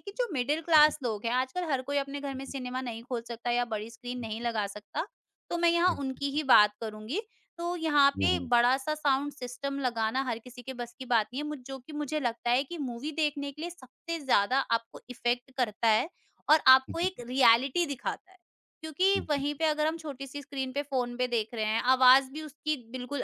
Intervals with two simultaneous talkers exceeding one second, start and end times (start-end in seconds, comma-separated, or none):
none